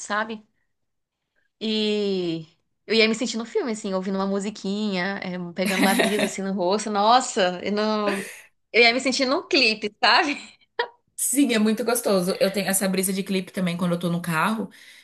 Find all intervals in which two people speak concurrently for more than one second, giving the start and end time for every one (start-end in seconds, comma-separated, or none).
none